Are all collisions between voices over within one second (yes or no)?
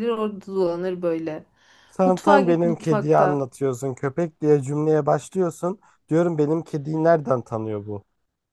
no